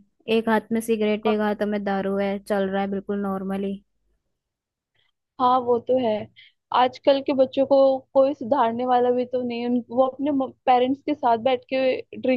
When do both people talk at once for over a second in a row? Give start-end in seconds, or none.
none